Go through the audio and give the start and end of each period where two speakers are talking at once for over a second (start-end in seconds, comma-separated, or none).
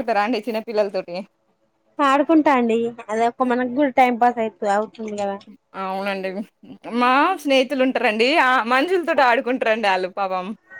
none